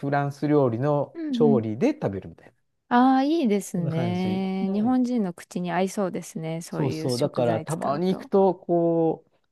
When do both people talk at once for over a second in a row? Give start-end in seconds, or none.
3.7-5.0, 6.7-8.3